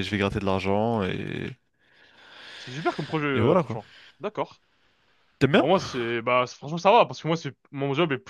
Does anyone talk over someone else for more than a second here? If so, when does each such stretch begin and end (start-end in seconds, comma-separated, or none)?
none